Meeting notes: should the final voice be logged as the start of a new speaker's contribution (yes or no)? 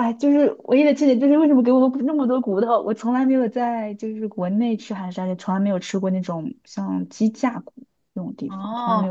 yes